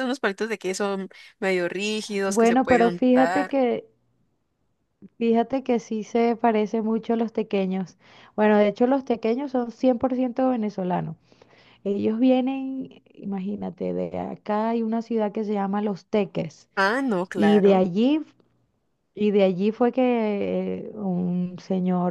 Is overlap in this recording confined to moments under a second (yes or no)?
no